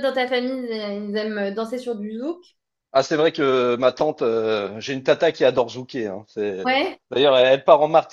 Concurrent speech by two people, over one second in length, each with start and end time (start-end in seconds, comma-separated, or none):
none